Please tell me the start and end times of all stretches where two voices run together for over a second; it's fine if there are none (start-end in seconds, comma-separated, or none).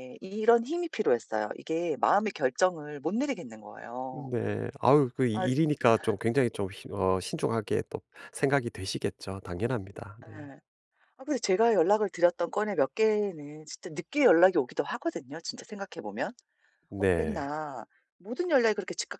none